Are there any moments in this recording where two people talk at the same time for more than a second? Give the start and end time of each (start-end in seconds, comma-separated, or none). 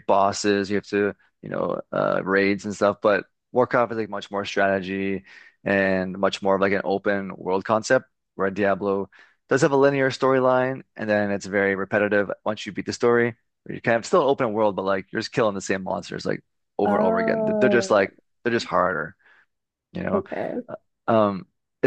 16.9-18.1